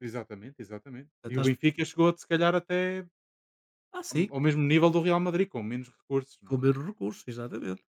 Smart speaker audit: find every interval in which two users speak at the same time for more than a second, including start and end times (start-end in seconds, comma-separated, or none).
none